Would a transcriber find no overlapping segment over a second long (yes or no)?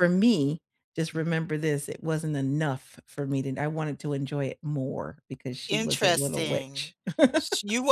no